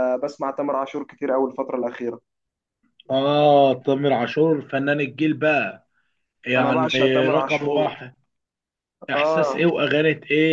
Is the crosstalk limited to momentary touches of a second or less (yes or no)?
no